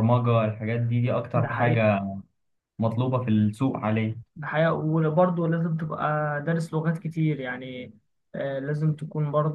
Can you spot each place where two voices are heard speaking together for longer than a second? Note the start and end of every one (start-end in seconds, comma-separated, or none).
none